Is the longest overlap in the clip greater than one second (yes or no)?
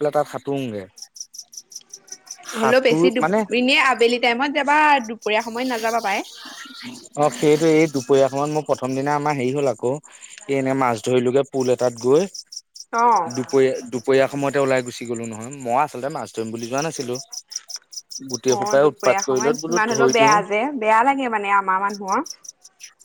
yes